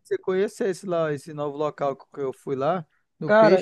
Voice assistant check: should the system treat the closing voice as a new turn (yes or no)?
yes